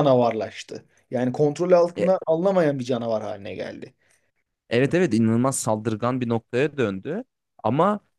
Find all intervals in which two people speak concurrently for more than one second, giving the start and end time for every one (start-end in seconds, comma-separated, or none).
none